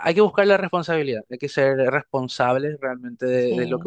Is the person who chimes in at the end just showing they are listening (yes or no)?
no